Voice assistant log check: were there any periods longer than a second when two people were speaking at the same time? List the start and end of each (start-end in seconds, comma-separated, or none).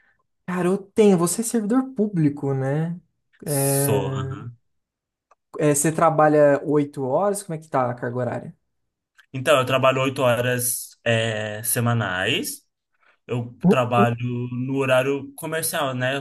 none